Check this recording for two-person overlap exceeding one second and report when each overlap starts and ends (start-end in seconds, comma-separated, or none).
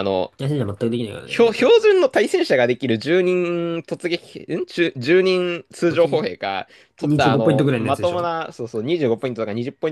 7.0-8.3